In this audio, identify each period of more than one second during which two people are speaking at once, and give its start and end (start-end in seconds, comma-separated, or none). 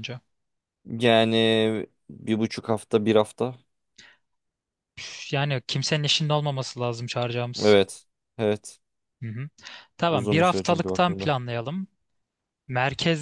10.1-11.3